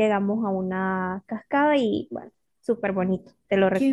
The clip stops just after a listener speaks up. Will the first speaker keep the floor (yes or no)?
no